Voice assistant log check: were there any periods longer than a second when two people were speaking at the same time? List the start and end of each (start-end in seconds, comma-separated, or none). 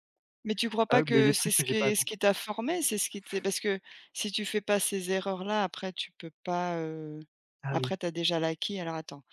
0.9-2.2